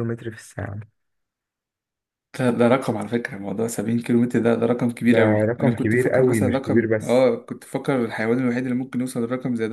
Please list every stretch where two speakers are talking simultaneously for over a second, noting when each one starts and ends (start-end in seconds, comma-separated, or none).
5.0-7.3